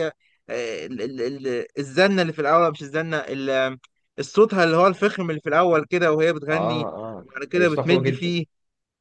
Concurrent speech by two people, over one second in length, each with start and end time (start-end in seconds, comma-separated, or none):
6.5-8.3